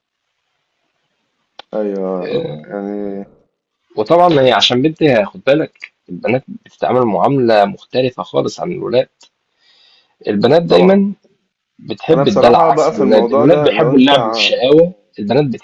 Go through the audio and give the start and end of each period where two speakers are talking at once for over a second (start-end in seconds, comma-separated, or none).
12.1-14.6